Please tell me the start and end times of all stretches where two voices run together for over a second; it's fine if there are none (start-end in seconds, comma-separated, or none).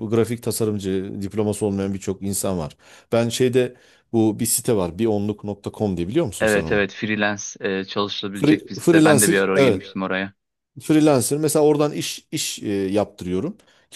8.3-9.8